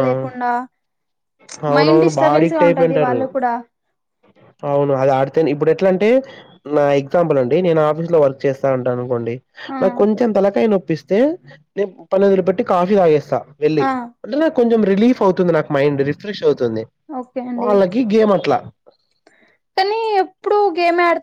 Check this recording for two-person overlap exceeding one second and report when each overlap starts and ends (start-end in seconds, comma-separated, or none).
1.8-3.2